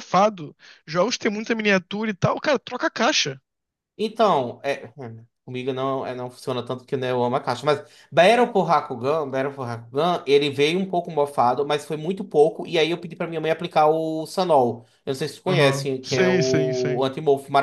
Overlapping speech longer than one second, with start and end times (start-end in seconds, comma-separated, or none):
15.5-17.0